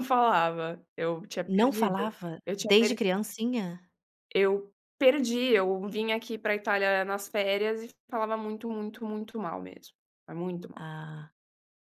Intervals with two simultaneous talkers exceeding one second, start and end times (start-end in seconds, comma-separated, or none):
1.5-3.0